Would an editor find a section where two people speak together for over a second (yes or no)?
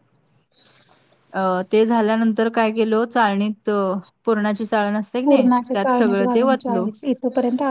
yes